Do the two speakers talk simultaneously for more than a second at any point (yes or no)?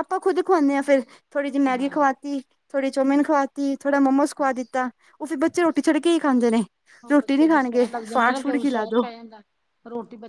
yes